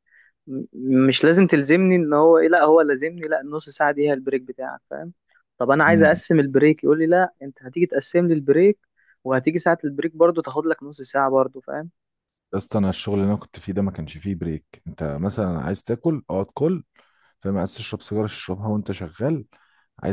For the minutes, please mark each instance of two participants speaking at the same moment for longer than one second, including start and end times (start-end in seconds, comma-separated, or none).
none